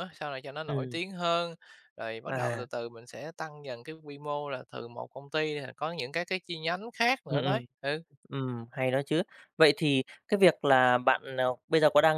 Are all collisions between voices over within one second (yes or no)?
yes